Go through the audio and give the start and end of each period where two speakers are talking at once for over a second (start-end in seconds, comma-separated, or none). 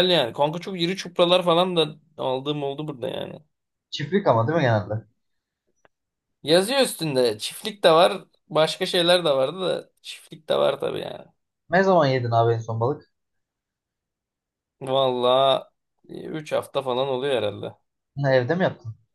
none